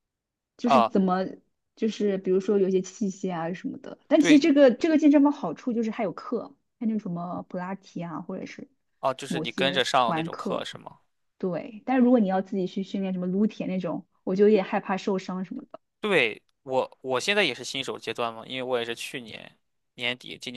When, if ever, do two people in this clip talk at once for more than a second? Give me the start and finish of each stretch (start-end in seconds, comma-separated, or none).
9.3-10.7